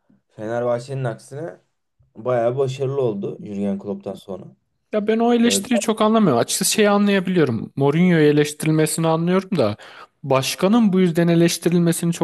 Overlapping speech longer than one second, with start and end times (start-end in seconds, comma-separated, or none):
none